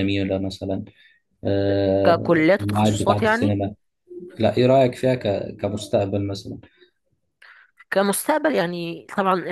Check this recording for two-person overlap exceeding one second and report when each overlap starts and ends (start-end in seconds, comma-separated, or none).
2.0-3.6